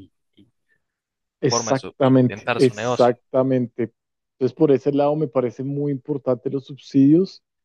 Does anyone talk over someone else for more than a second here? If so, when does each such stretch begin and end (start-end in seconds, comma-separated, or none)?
1.5-3.1